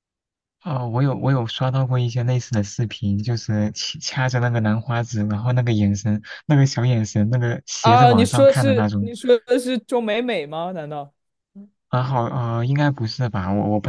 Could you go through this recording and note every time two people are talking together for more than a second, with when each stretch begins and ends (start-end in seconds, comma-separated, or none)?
7.8-9.1